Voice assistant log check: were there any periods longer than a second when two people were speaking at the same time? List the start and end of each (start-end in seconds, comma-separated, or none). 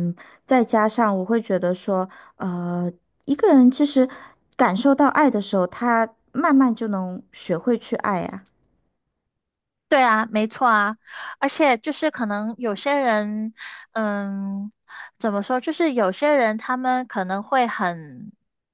none